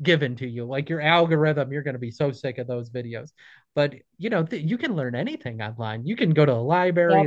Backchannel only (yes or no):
yes